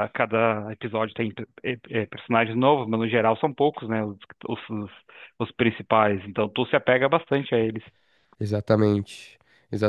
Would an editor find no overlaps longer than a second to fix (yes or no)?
yes